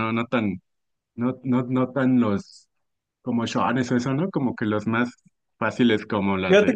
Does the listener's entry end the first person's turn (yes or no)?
yes